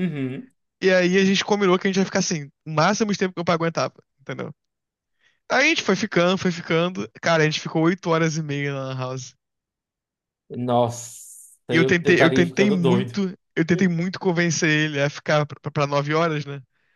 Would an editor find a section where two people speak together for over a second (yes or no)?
yes